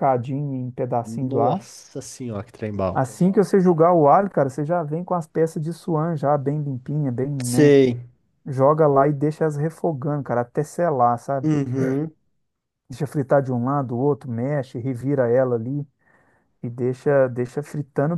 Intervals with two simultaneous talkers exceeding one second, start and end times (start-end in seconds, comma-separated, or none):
none